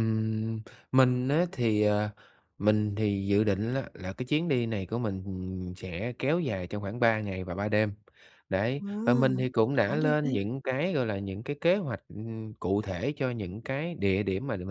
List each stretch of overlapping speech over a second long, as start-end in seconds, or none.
8.8-10.4